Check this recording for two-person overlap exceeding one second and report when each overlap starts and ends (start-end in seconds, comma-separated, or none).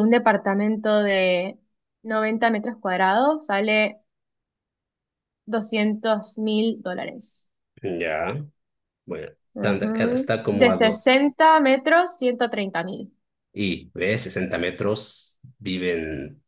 9.5-11.0